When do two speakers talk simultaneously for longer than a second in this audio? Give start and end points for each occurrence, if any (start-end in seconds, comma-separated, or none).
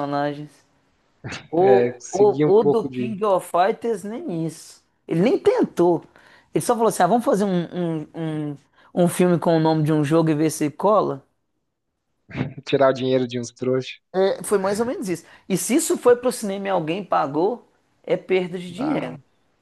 1.6-3.1